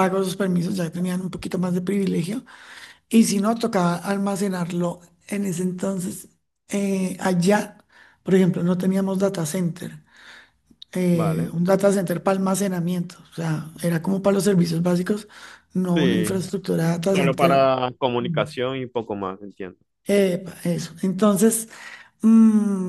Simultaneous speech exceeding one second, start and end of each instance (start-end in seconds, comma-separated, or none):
none